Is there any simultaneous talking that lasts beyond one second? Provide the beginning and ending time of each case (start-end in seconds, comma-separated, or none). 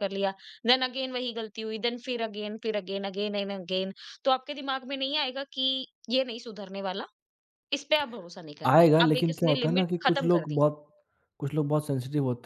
8.7-10.6